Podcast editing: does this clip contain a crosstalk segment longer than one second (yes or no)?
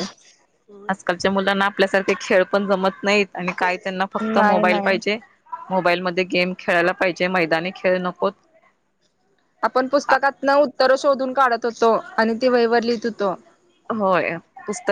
no